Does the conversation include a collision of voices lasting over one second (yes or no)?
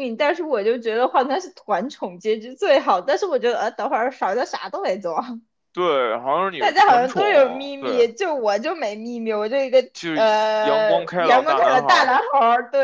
yes